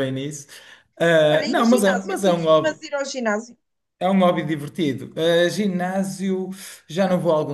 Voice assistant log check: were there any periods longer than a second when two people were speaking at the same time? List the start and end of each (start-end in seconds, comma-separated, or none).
1.3-2.8